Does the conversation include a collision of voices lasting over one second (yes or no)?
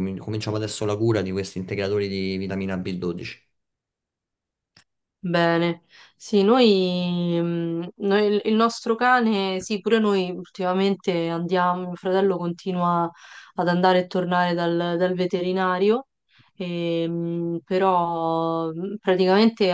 no